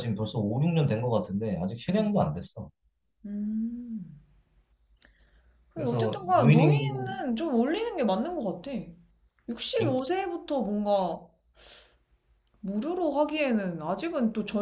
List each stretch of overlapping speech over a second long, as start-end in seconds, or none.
5.7-7.2